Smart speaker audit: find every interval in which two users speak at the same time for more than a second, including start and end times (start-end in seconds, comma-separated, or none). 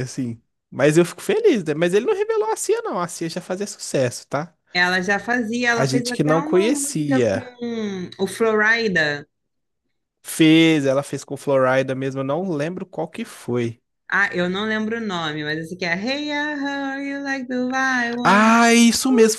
5.7-7.5